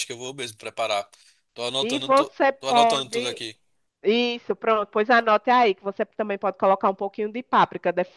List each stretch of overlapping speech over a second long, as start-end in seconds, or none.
1.8-3.4